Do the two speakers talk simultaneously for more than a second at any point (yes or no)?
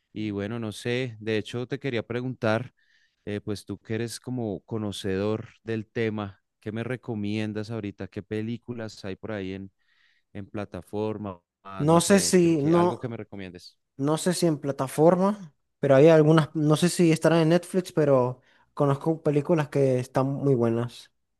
yes